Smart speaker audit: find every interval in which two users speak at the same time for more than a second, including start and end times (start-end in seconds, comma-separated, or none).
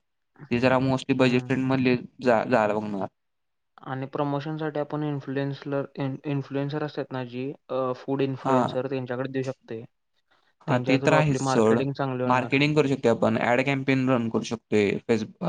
none